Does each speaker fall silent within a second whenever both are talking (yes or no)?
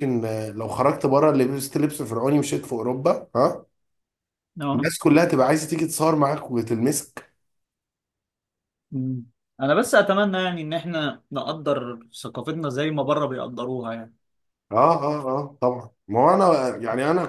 yes